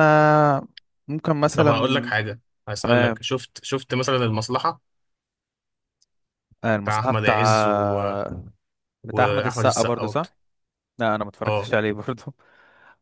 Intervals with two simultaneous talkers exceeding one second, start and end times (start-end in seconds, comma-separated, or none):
9.0-10.3